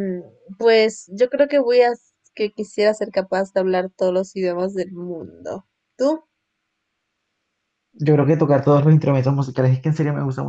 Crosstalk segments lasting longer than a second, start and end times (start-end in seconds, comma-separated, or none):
none